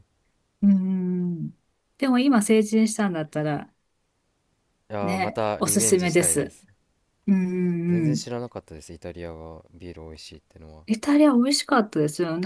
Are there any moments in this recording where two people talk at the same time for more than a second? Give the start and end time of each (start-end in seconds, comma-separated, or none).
5.0-6.5